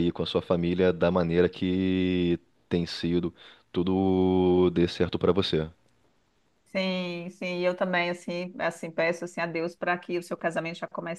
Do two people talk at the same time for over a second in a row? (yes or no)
no